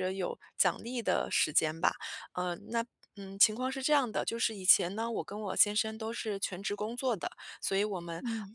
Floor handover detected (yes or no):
no